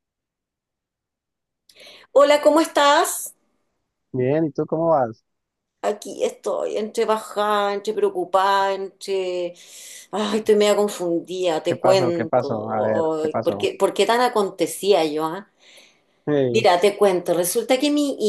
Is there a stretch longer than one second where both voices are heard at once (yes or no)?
yes